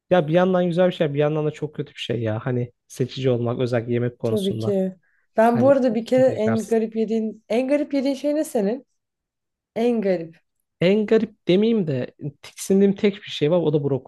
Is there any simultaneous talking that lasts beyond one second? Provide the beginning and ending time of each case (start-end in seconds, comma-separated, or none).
5.5-6.8